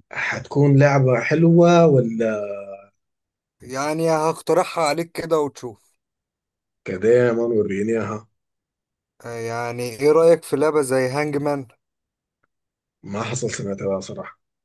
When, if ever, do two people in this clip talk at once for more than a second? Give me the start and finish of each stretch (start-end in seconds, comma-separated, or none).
none